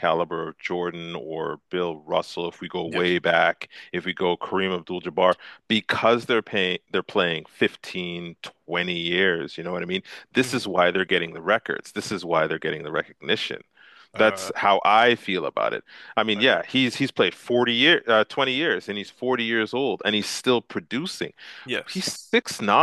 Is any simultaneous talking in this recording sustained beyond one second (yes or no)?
no